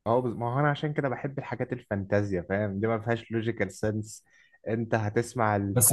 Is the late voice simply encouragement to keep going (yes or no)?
no